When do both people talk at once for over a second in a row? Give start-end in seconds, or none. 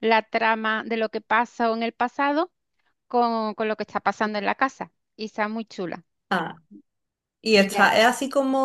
none